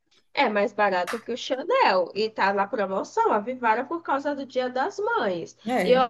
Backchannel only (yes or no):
yes